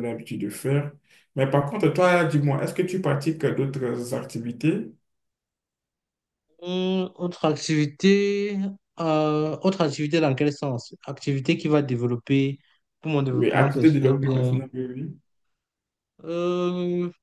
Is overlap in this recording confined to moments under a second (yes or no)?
no